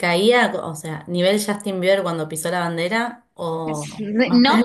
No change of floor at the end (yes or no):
no